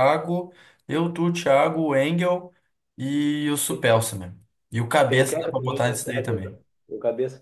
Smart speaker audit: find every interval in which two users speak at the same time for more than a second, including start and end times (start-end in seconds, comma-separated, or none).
5.1-6.6